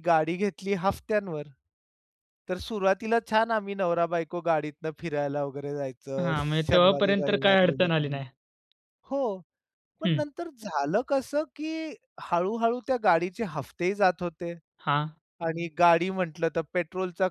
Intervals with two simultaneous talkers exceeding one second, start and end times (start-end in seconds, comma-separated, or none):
6.2-8.2